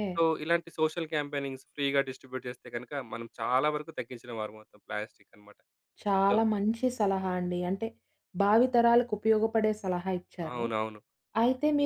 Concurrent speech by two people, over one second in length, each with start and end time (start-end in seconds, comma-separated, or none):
none